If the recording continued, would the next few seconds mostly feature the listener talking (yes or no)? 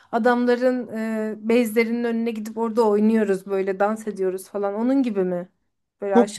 yes